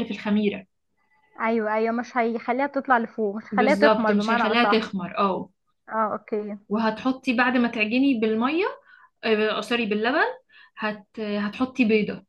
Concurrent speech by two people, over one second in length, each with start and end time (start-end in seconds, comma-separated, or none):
3.5-4.9